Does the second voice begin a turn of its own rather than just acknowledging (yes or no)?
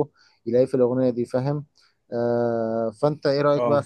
no